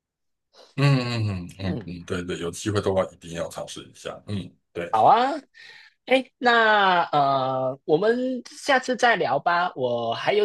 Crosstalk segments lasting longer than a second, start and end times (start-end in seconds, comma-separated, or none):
none